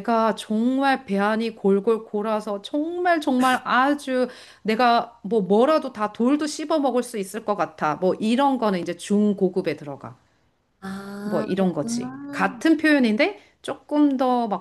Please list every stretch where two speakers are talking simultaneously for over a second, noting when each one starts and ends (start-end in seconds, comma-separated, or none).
11.2-12.7